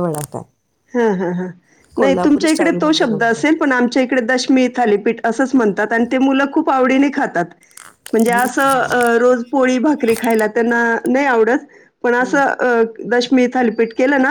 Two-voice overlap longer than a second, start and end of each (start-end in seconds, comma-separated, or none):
2.0-3.6